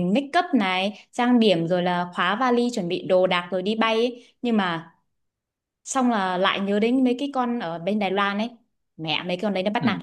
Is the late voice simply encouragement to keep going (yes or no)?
no